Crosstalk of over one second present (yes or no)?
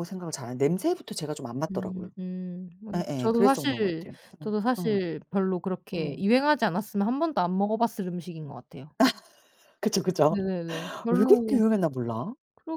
yes